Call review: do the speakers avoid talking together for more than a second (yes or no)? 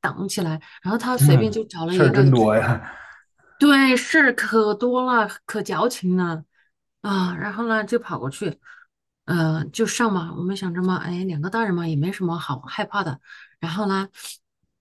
no